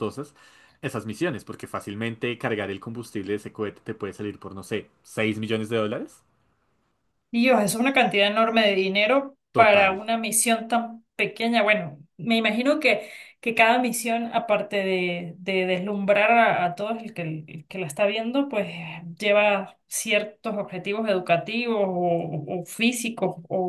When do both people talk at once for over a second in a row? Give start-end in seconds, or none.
none